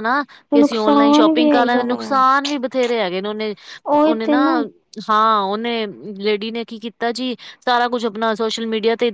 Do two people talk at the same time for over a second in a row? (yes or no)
yes